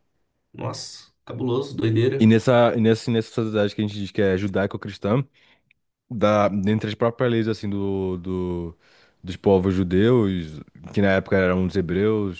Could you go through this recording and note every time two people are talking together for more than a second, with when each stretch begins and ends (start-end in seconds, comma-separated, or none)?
none